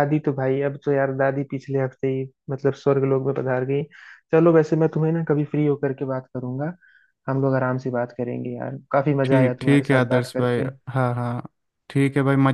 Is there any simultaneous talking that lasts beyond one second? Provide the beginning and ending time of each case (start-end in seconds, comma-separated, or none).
9.2-10.7